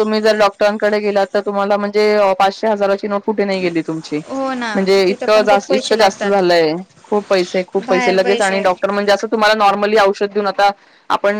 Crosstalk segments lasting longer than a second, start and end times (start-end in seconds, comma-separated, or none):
4.7-6.3